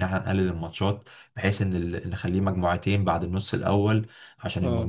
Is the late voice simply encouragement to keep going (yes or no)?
yes